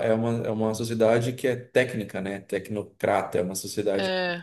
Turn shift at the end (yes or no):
no